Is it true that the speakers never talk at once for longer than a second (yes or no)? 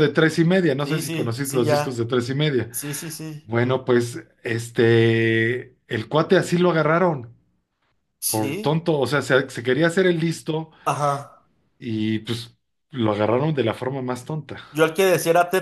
no